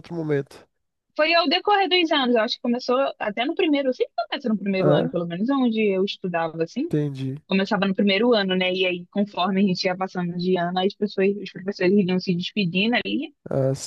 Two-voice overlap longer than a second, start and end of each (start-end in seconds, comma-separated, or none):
none